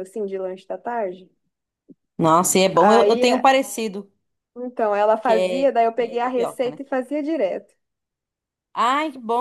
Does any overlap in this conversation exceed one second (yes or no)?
yes